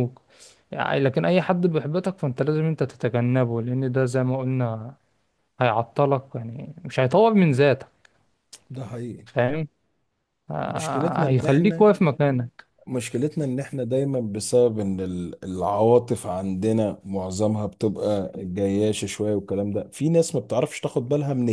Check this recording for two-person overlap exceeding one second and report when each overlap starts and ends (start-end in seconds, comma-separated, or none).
10.7-11.9